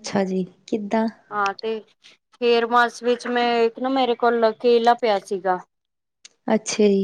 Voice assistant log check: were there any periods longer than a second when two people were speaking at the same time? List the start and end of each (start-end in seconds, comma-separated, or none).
none